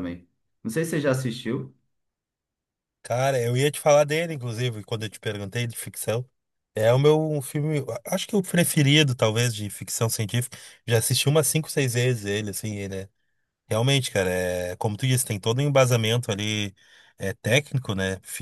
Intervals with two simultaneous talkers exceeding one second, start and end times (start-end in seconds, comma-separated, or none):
none